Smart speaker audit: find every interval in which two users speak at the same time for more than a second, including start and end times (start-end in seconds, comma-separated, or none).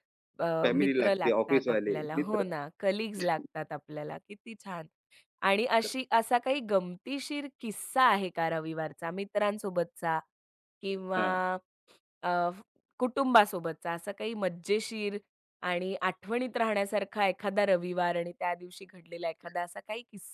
0.6-2.5